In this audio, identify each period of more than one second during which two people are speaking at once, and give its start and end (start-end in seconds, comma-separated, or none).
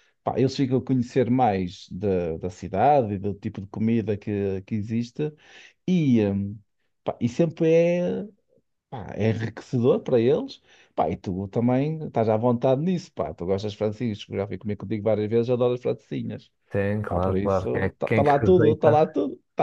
17.1-19.0